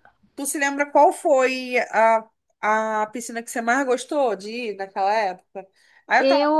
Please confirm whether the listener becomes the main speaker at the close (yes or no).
no